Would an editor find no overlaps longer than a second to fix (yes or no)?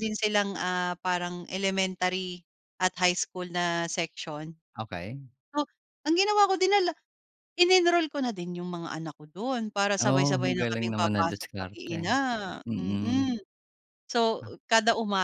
no